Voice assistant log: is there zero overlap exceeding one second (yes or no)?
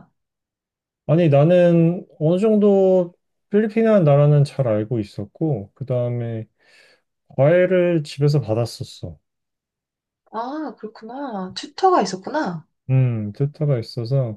yes